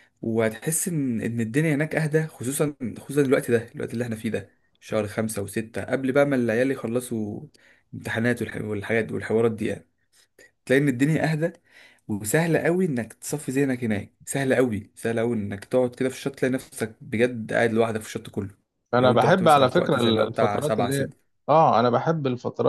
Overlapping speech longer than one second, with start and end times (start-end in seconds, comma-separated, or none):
18.9-21.1